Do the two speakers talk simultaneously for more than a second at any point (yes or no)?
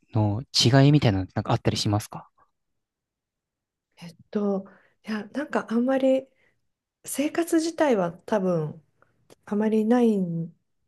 no